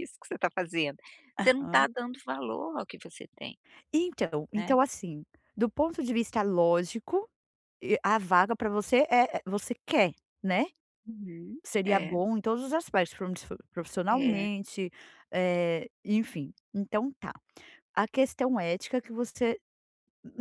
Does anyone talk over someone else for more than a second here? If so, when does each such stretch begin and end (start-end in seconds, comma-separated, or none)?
none